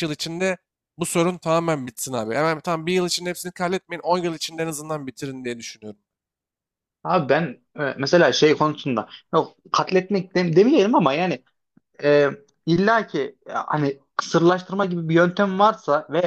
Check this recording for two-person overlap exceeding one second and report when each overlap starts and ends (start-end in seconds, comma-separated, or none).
none